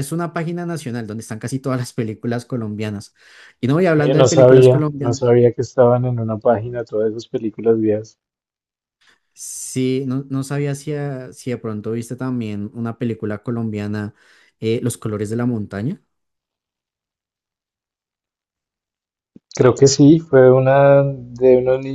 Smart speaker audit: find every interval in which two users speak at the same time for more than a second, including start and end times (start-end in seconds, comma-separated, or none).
4.0-5.3